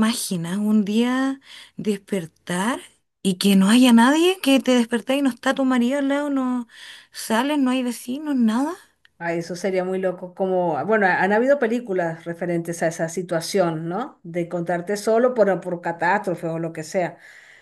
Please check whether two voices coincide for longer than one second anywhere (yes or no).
no